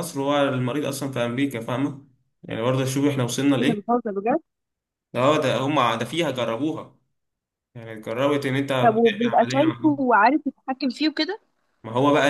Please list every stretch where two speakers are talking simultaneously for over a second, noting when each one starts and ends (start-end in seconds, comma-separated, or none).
8.8-10.0